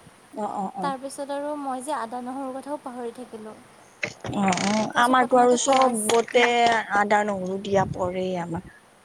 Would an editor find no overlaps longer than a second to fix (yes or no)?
no